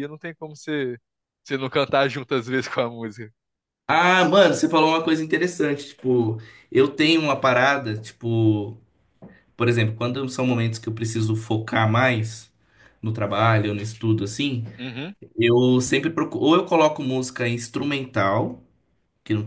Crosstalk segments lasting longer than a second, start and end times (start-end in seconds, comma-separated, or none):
none